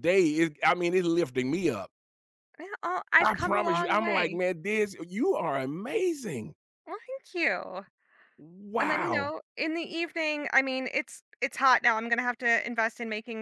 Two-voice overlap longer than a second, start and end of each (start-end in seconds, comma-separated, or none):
3.2-4.4